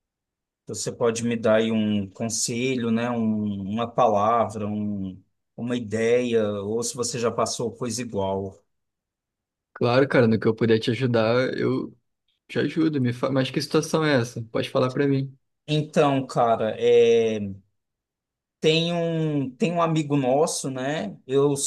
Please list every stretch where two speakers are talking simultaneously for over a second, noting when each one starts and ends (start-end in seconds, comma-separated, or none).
none